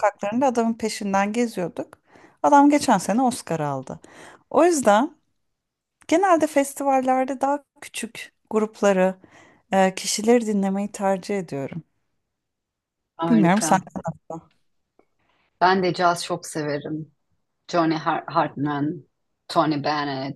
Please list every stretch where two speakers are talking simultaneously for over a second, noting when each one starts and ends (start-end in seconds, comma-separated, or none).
none